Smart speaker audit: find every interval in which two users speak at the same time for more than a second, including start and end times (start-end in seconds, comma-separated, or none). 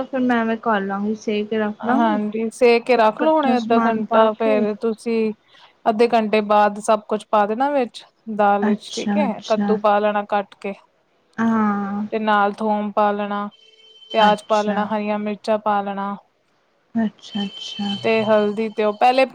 2.9-4.7